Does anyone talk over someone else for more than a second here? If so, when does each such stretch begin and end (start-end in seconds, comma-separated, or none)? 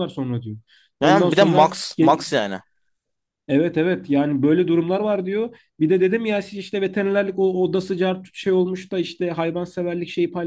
1.0-2.5